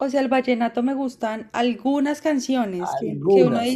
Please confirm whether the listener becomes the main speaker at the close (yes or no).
no